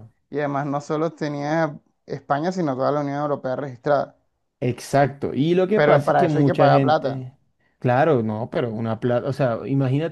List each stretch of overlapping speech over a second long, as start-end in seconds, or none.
5.7-7.2